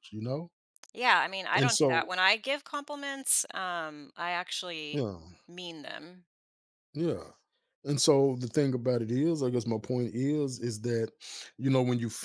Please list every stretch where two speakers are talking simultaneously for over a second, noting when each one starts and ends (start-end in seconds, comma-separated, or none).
none